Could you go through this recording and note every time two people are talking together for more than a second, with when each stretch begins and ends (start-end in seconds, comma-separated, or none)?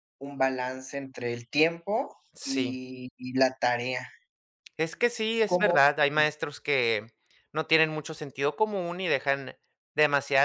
none